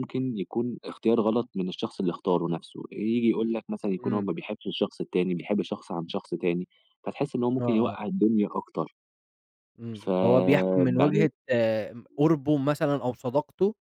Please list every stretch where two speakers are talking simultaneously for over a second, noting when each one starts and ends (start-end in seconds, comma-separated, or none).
9.9-11.3